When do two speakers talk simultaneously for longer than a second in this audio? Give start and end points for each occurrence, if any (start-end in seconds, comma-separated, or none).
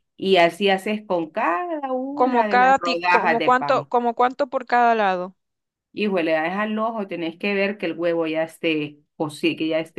2.1-3.9